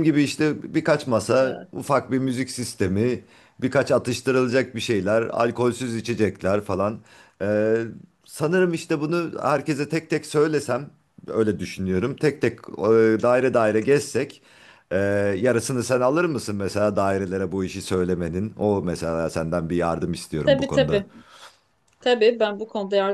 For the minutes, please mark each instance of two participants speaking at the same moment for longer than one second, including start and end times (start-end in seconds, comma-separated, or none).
none